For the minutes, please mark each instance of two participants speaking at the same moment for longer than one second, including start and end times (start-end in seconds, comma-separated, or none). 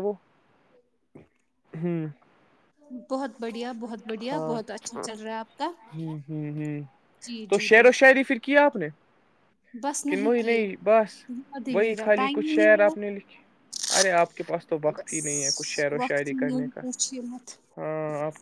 11.7-13.1, 15.0-16.8